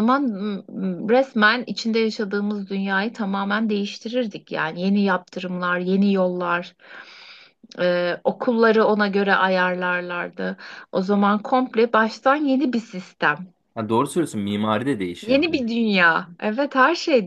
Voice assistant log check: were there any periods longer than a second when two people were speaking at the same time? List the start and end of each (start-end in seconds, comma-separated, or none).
none